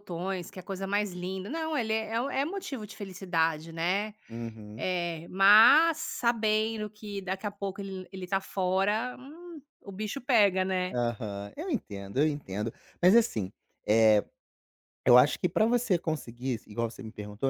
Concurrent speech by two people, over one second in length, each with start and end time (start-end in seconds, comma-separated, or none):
none